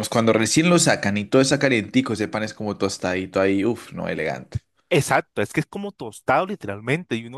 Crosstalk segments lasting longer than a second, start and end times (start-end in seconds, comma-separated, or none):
none